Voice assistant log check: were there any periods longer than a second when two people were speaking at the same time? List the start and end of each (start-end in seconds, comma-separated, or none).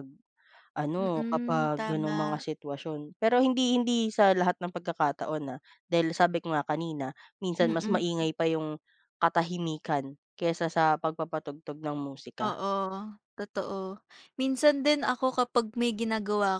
1.0-2.4